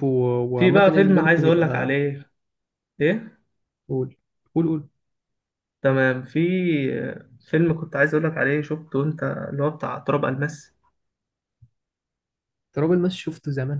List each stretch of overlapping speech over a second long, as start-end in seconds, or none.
0.6-1.9